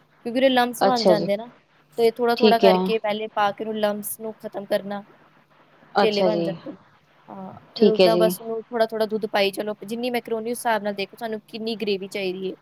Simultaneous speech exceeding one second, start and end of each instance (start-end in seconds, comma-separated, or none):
none